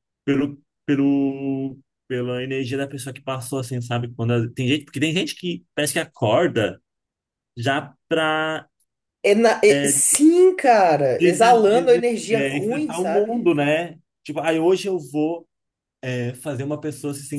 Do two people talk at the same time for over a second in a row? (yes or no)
yes